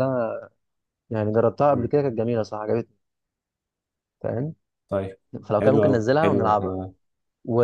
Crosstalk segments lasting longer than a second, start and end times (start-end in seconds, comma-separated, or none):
5.5-6.8